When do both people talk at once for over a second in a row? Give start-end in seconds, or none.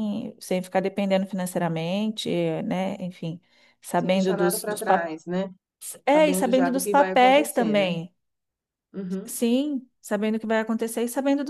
4.0-5.2, 6.0-7.9